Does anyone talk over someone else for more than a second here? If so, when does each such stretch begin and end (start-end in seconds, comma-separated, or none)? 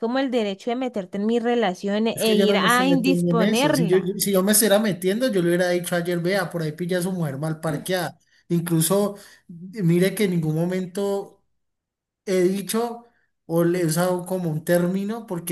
2.1-4.2